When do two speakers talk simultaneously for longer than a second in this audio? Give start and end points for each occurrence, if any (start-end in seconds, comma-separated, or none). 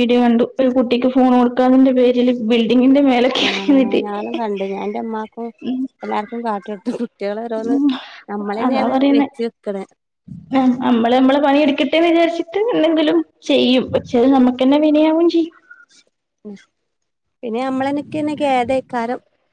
none